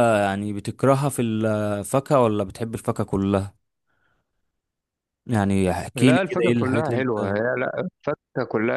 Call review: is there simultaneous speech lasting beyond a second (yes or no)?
yes